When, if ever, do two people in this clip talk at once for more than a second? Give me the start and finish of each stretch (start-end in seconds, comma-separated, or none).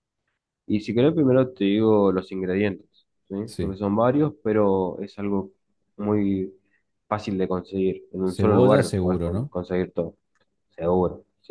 8.2-9.5